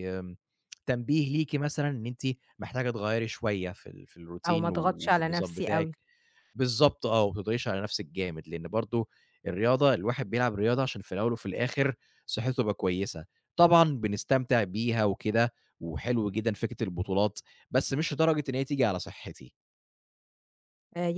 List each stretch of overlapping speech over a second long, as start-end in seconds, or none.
4.5-6.0